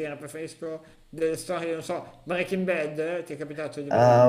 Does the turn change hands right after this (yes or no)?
yes